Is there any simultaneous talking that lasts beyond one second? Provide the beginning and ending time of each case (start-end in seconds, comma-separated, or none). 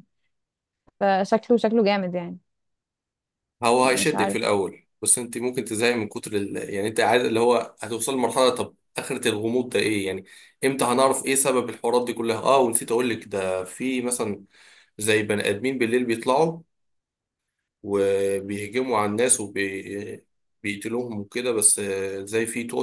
none